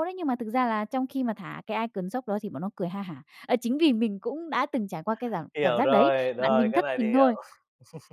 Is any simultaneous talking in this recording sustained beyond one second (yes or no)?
yes